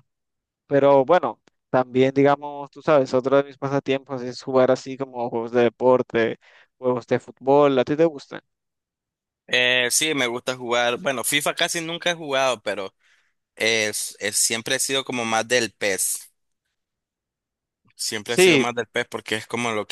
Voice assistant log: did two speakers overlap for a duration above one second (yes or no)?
no